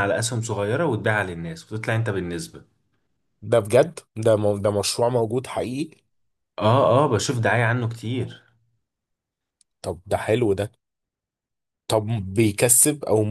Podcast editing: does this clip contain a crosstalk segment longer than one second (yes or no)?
no